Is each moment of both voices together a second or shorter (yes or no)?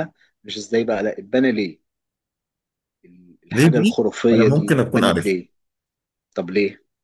no